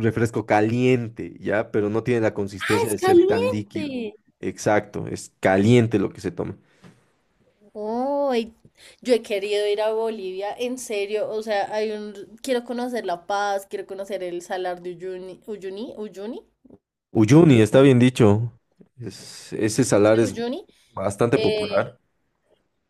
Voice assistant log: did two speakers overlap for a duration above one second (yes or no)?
yes